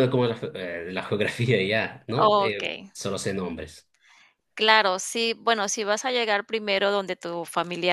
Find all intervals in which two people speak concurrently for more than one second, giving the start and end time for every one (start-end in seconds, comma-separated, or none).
none